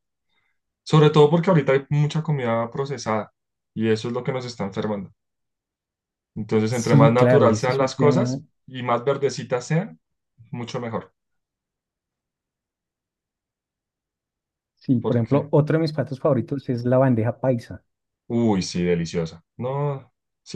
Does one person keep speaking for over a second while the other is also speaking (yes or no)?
yes